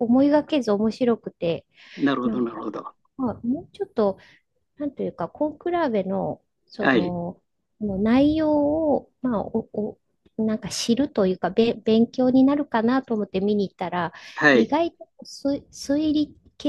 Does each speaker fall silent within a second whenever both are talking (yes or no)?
yes